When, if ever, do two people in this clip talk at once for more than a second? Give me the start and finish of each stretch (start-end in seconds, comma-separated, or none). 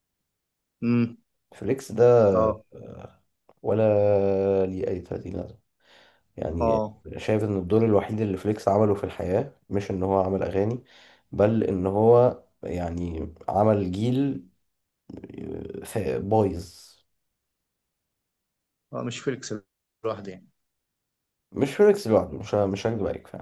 none